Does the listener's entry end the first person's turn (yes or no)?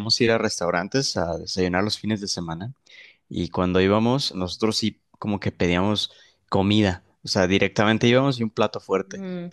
no